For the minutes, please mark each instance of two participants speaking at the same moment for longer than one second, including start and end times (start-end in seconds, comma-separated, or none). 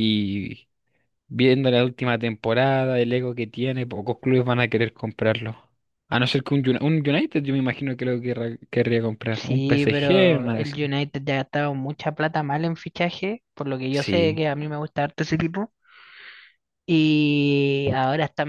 9.3-10.8